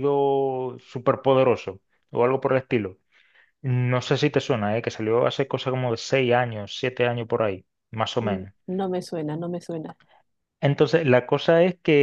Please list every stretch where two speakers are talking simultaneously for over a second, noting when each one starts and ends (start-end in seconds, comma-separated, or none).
none